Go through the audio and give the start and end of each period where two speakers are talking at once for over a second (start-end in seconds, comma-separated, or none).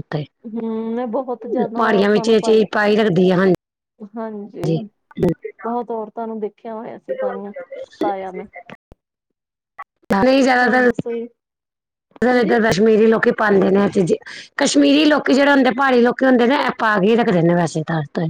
none